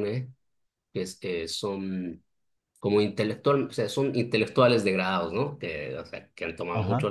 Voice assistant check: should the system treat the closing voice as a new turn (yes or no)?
no